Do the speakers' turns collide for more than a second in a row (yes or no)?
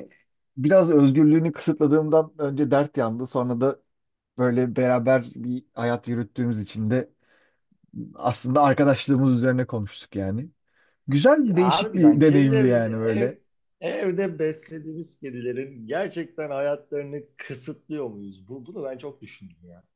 yes